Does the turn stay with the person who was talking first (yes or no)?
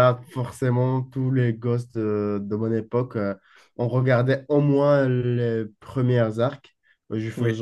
yes